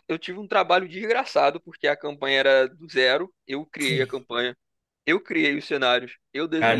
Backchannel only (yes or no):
no